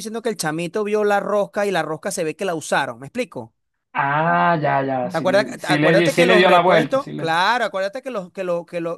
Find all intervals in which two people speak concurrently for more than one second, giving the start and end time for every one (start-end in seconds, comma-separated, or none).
5.1-7.4